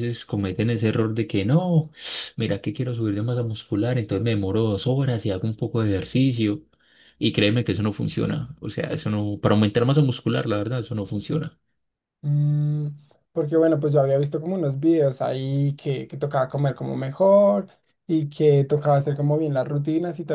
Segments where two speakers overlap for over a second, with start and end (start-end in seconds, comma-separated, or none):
none